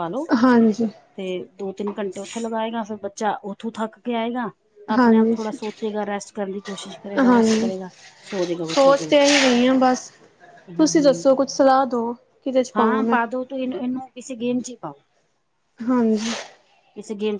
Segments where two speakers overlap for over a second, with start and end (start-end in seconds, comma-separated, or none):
none